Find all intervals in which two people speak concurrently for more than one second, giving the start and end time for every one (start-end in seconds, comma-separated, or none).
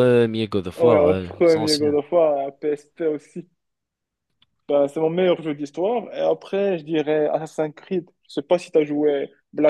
0.8-2.0